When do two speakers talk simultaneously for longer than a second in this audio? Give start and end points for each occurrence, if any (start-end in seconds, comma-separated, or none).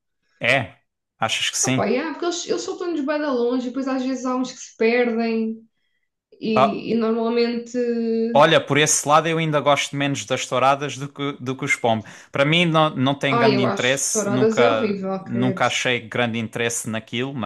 13.3-15.7